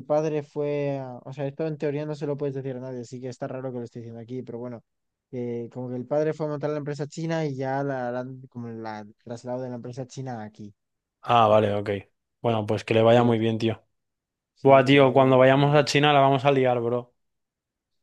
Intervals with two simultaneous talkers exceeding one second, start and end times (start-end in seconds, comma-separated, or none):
14.6-15.9